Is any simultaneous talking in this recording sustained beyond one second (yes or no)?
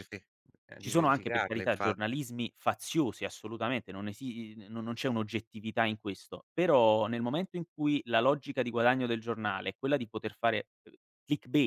yes